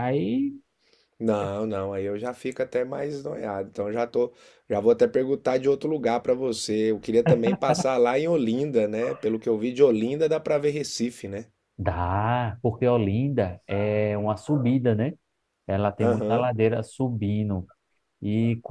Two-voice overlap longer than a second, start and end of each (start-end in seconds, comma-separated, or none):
none